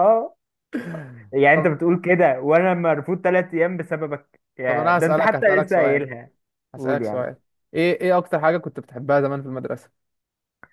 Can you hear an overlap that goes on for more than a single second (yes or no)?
yes